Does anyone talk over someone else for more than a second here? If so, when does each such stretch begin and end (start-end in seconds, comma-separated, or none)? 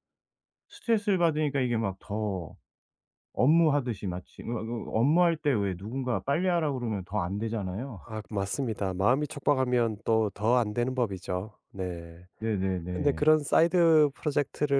none